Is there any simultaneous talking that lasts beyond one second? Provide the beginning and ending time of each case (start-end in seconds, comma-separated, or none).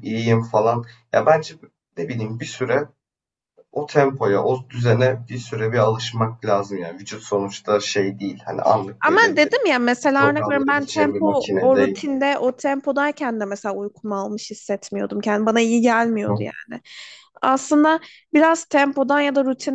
10.1-12.0